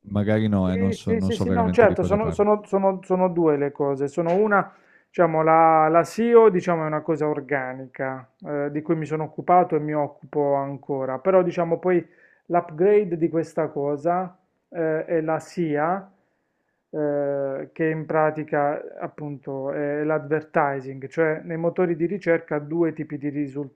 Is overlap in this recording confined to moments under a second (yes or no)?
no